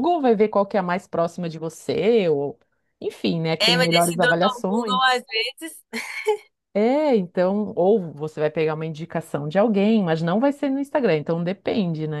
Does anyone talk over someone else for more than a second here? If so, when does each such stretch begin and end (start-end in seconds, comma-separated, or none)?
3.6-5.0